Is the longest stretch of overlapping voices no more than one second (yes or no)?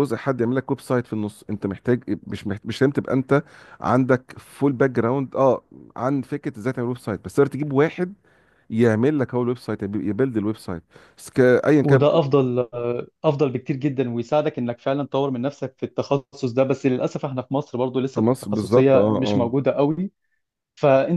no